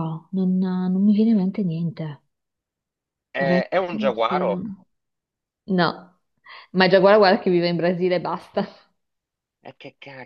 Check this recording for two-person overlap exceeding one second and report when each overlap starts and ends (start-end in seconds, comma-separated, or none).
3.4-4.7